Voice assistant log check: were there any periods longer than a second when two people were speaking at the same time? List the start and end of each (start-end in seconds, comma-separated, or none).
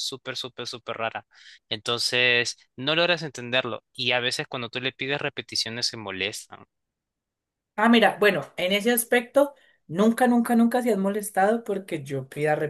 none